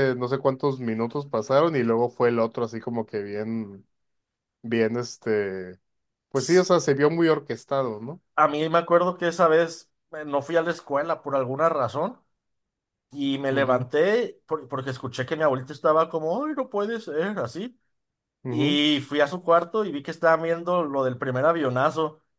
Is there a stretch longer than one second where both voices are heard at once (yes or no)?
no